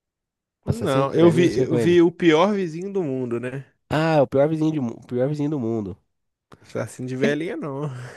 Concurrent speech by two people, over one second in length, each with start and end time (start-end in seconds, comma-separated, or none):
0.6-2.0